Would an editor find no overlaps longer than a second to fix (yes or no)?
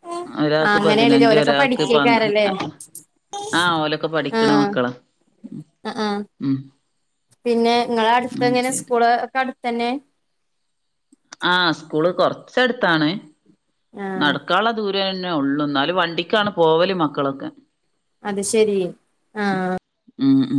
no